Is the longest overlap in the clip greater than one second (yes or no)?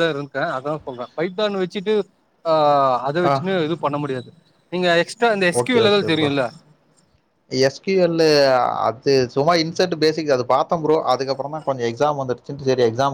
no